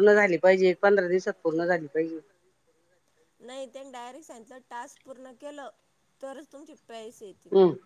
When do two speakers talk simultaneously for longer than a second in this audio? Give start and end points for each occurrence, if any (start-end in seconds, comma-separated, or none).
none